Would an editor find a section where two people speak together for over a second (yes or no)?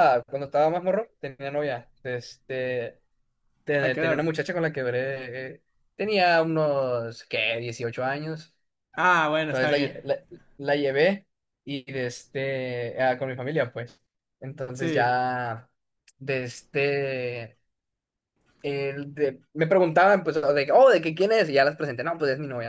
no